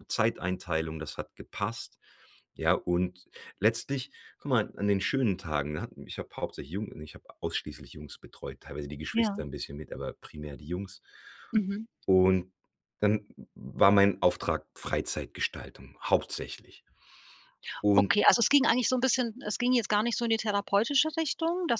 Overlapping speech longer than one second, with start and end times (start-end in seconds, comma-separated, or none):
none